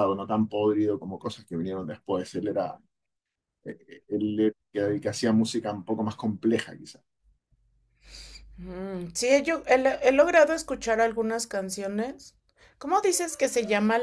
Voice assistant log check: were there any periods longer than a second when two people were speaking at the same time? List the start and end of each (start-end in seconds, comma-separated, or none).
none